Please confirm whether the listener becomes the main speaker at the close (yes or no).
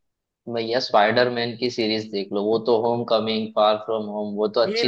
yes